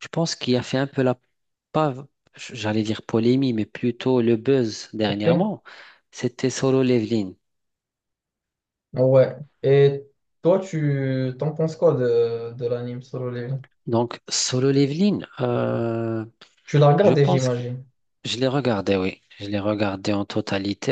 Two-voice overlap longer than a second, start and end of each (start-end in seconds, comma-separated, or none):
none